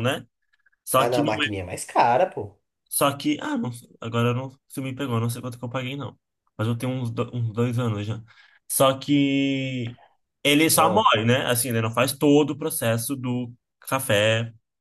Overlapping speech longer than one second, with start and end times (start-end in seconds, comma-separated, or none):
none